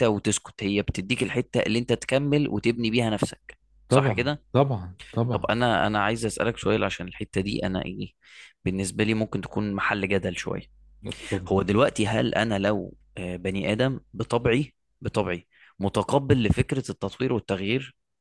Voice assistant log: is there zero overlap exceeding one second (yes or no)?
yes